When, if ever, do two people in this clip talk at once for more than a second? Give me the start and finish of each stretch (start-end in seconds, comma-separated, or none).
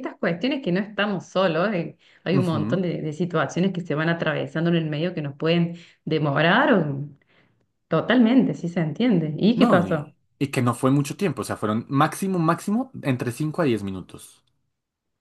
none